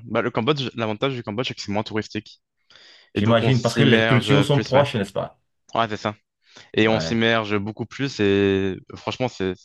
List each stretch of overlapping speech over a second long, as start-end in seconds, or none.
3.1-4.9